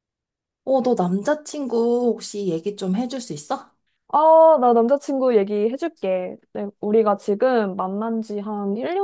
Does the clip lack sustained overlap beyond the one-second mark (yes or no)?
yes